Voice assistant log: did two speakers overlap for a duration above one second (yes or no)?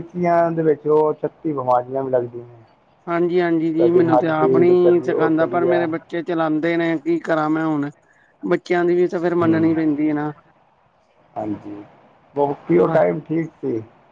yes